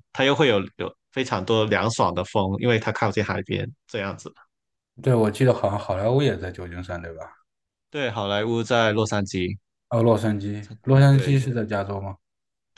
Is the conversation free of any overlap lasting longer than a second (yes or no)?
yes